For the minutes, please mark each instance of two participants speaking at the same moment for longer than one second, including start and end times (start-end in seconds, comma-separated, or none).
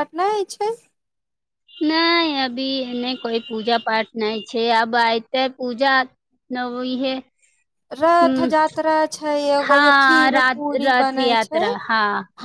9.6-11.6